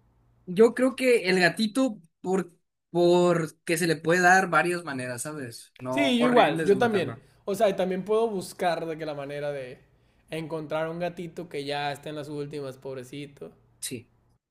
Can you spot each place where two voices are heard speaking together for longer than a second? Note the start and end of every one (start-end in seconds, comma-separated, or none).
5.9-7.2